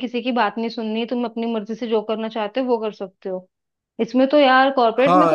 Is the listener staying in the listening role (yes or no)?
yes